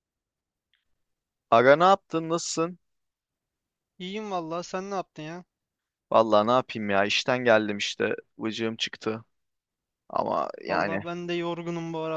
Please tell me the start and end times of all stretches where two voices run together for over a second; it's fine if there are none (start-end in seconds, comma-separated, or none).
none